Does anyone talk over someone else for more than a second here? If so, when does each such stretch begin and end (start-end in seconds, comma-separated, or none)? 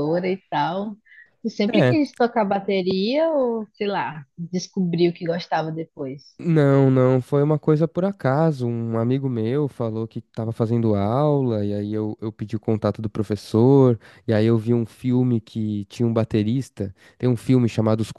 none